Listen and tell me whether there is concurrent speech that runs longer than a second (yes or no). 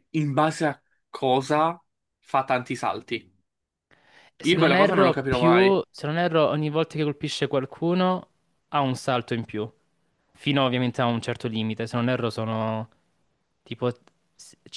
yes